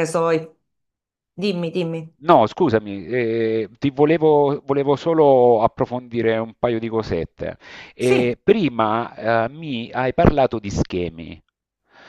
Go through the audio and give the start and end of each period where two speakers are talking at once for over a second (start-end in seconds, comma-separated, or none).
none